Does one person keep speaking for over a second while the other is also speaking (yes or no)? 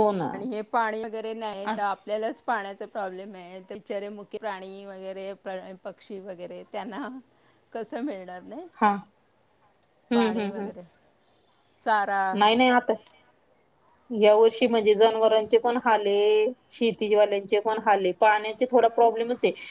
no